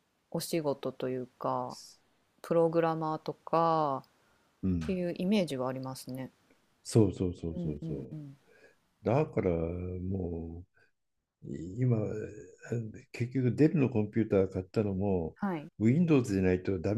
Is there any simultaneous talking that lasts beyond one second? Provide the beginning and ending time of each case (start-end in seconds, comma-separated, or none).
none